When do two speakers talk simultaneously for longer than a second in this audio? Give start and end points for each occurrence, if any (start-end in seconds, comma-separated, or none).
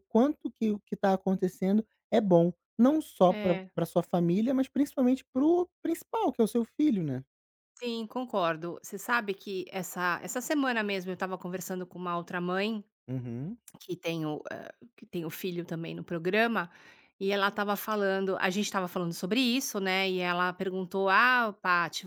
none